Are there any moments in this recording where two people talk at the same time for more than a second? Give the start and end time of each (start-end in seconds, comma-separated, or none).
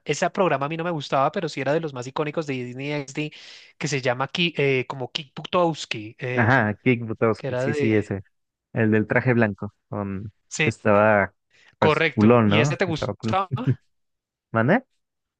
11.8-13.3